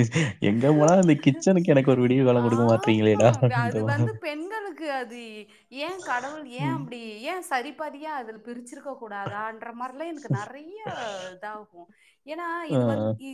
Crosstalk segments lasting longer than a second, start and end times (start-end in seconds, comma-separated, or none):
2.5-4.2